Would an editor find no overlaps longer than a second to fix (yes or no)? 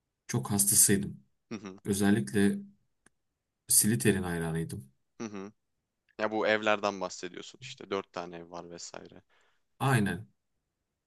yes